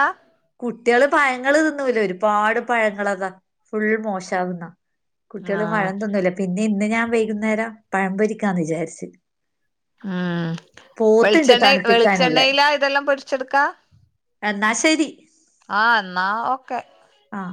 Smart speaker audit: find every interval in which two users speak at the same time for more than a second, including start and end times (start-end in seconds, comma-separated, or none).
11.2-12.5